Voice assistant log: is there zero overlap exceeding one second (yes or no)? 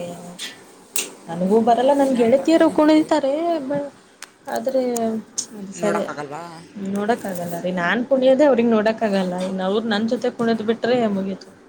no